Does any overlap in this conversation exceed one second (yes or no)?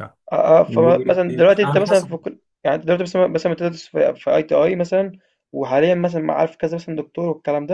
yes